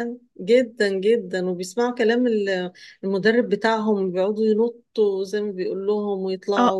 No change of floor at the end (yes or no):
no